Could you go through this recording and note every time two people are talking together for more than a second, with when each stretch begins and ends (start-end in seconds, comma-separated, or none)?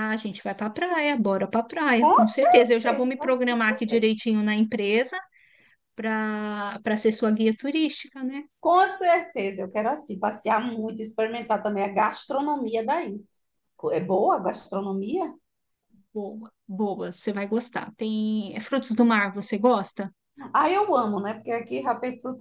2.0-4.1